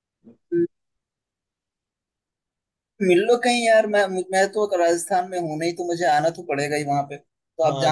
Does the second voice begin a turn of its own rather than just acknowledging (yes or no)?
yes